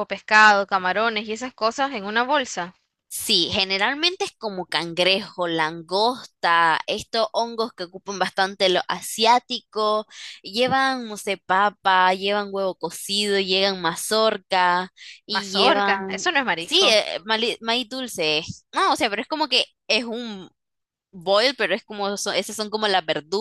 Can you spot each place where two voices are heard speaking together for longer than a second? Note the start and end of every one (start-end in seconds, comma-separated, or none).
15.3-17.0